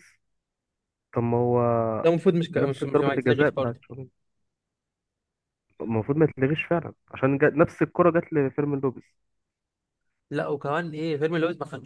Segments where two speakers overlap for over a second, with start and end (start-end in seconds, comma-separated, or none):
2.6-3.8